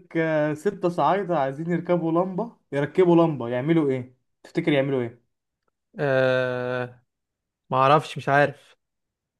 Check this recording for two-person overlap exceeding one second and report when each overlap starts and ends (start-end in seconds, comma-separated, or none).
none